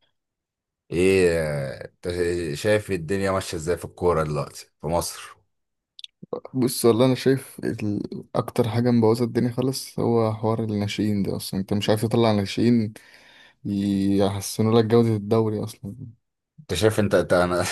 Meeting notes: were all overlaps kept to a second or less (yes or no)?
yes